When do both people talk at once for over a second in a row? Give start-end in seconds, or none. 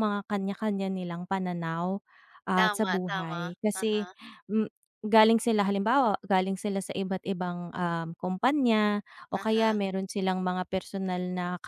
2.6-4.0